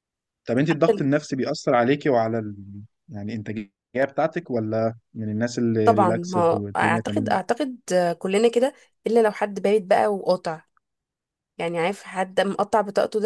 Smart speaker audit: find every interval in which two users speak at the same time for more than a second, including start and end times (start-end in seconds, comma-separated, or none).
5.8-7.4